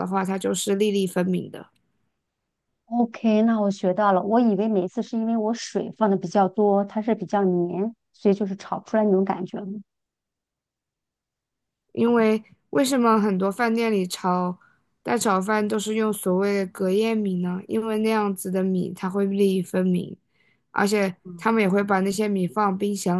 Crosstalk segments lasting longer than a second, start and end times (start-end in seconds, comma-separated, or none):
none